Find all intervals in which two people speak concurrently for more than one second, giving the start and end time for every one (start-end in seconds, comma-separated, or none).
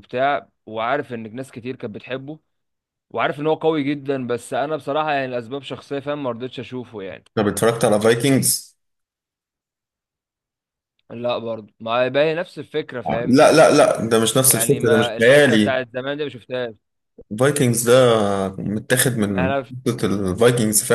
14.4-15.8